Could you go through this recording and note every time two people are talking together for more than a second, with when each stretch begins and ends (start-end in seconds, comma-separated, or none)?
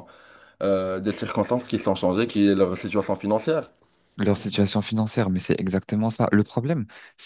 none